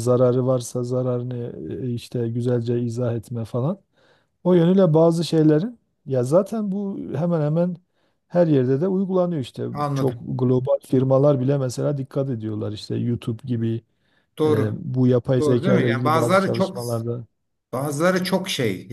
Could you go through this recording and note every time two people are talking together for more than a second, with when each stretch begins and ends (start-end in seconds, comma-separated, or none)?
15.4-16.8